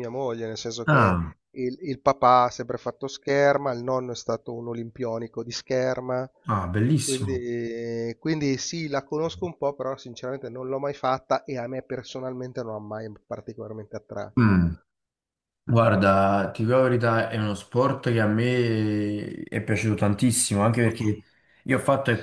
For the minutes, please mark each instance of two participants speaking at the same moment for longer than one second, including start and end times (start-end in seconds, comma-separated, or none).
none